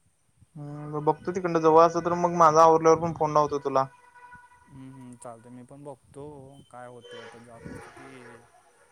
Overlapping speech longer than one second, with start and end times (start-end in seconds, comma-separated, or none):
none